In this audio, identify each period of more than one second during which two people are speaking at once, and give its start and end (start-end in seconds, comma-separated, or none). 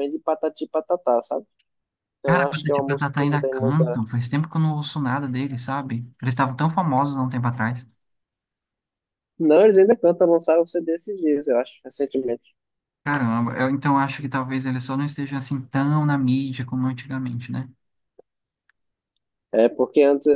2.2-4.0